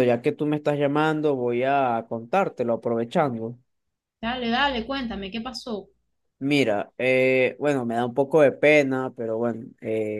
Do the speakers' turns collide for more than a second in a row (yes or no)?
no